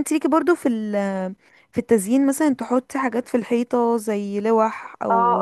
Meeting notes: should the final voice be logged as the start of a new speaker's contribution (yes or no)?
yes